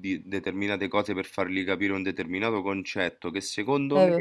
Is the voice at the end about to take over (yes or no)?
no